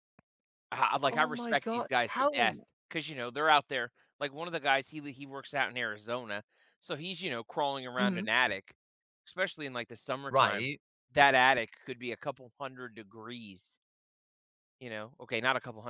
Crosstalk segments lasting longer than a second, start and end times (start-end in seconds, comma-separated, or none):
1.1-2.6